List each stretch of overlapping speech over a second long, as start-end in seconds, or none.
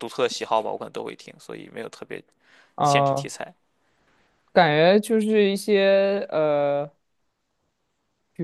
none